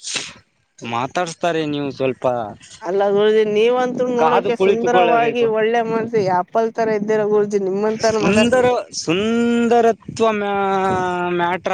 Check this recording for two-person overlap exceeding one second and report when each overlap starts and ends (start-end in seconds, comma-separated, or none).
4.2-5.5